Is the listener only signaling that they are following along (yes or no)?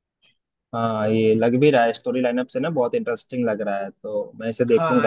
no